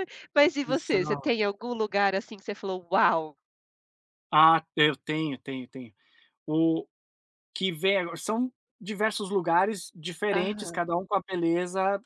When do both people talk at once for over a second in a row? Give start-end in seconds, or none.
none